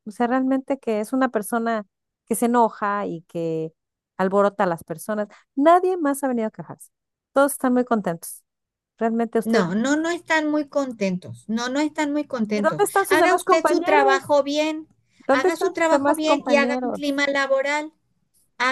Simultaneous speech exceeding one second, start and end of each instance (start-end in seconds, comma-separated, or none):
12.5-14.3, 15.3-17.2